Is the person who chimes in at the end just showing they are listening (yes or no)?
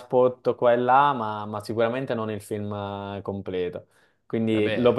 yes